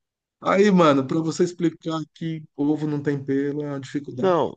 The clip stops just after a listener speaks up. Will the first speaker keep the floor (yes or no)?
no